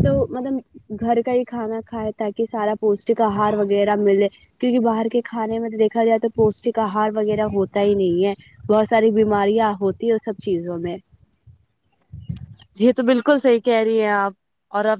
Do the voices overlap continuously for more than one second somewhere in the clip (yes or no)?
no